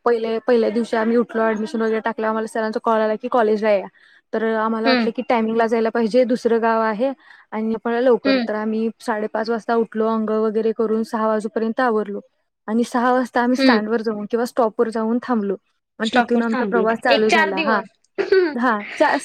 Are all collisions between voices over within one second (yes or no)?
no